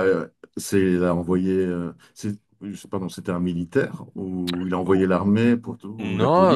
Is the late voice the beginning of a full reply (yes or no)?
yes